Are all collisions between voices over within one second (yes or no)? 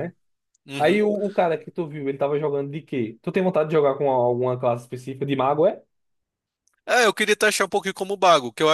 yes